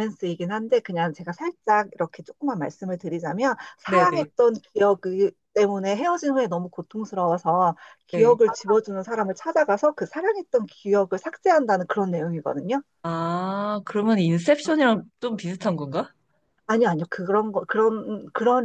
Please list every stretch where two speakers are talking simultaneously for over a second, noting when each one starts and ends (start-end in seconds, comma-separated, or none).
none